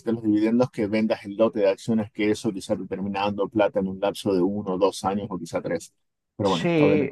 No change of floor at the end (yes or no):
no